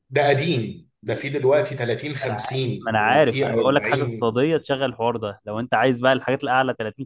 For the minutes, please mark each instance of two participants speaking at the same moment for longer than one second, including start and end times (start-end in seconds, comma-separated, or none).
2.2-4.3